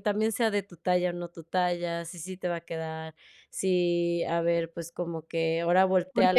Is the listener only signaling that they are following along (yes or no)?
no